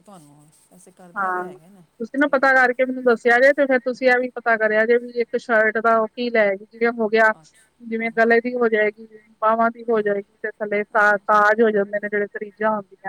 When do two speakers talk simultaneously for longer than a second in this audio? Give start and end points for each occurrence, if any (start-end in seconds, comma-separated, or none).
none